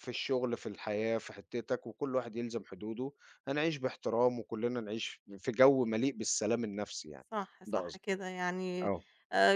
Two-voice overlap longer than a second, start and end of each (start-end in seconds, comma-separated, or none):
none